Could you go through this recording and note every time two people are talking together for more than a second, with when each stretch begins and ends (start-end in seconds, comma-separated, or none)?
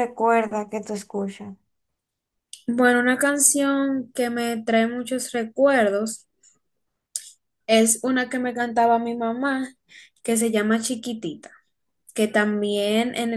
none